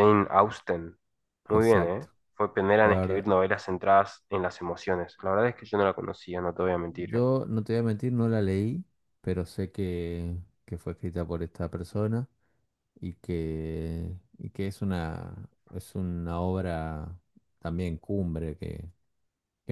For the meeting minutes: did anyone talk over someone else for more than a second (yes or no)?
no